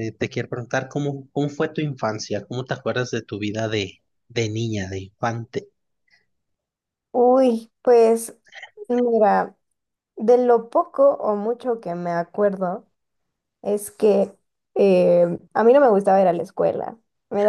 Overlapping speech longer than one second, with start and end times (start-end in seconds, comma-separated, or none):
none